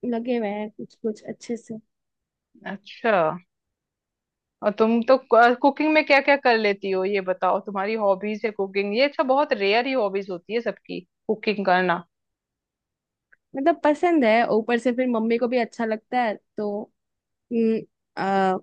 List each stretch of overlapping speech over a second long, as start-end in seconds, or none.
none